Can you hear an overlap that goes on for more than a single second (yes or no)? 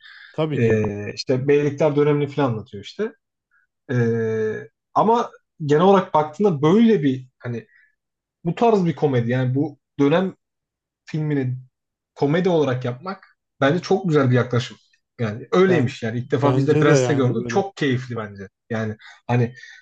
yes